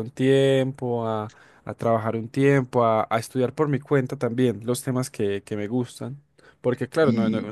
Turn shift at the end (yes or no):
no